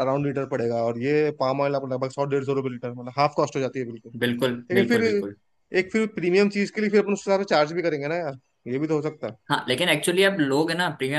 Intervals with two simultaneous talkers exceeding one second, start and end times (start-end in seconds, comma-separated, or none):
none